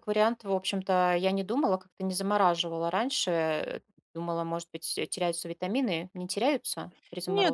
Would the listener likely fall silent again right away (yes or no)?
no